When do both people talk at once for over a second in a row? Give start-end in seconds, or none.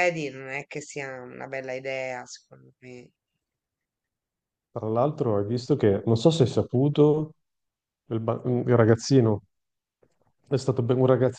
none